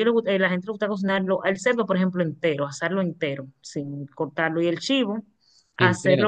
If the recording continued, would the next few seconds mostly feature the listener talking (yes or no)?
yes